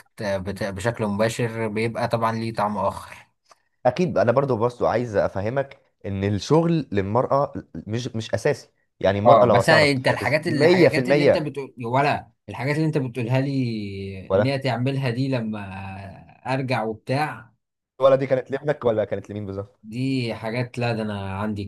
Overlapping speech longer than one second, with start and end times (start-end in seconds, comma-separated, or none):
9.2-11.5